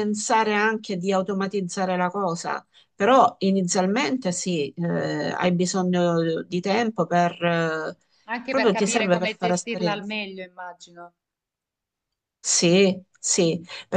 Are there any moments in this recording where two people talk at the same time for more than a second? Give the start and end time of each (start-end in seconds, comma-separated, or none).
8.5-10.1